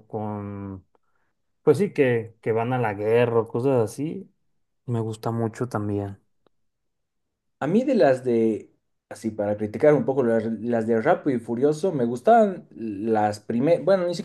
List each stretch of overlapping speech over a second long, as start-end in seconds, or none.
none